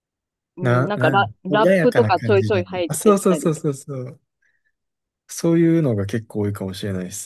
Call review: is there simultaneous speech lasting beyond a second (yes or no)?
yes